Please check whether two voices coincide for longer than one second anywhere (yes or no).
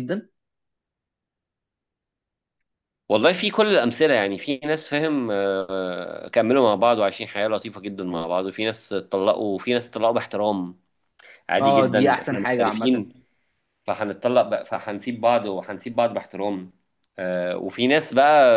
yes